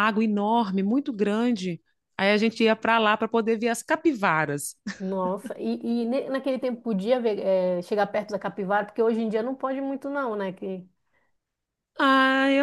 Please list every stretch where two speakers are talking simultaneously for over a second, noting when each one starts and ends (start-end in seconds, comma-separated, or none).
none